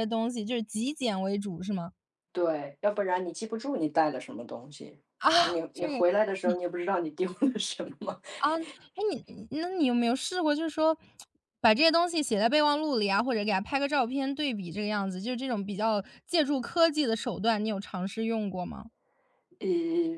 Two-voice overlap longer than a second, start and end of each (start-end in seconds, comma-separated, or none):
none